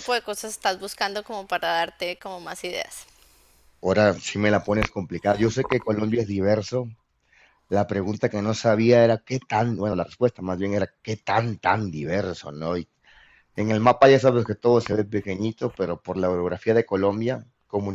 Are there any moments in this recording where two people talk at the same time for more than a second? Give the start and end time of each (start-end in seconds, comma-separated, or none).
none